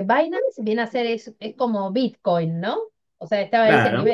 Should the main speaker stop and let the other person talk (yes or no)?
no